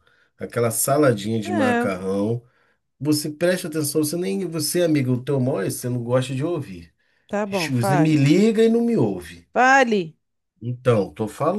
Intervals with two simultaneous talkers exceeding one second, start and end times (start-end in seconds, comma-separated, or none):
none